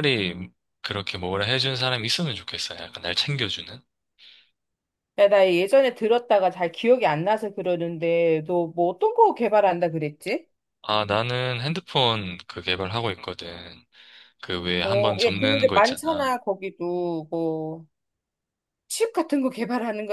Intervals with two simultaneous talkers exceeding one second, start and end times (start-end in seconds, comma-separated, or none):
14.8-16.3